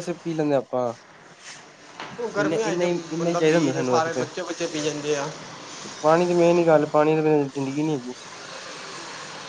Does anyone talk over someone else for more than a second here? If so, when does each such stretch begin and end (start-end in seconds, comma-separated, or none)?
2.4-4.2